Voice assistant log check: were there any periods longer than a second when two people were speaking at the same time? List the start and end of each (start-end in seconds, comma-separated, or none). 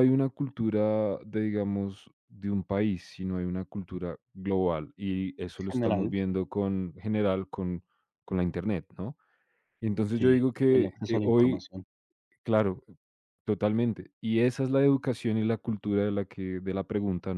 10.1-11.7